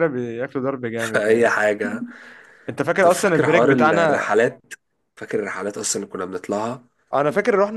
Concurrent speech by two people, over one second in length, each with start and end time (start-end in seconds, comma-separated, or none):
3.0-4.3